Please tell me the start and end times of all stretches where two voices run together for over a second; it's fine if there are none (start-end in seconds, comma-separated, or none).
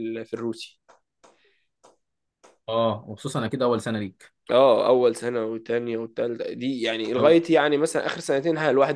none